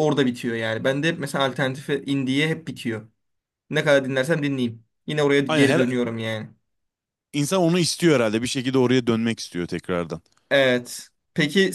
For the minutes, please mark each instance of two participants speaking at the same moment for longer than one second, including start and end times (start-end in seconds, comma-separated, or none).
none